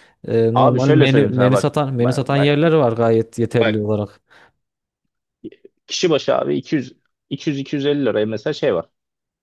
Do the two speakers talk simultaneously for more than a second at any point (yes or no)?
yes